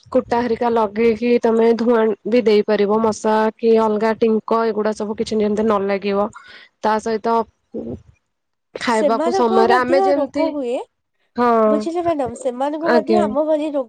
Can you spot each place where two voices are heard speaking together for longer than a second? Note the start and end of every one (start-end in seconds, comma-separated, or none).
9.0-10.4